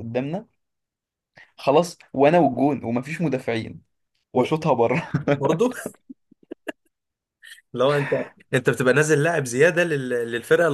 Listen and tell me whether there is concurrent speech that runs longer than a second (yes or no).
no